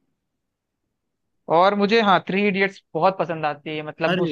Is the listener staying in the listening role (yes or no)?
yes